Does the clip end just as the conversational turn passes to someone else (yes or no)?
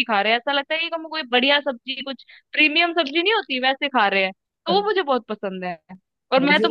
no